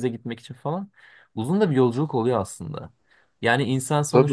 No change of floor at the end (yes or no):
yes